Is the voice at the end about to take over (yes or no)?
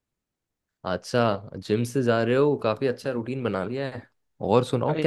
no